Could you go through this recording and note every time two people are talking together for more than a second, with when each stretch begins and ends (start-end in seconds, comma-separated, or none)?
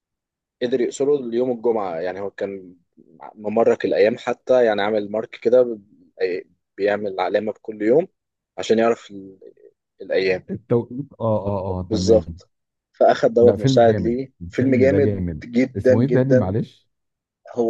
13.4-16.5